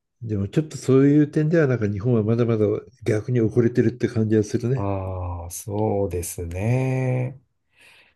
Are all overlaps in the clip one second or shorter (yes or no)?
yes